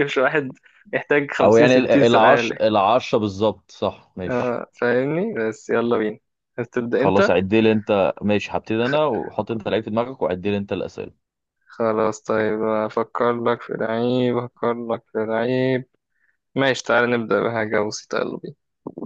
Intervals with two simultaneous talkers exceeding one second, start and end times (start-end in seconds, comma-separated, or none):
1.4-2.6